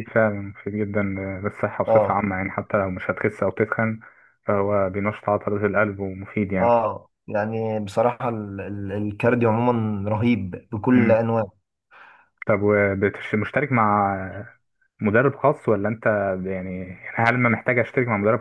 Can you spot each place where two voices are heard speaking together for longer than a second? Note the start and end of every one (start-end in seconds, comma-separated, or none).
none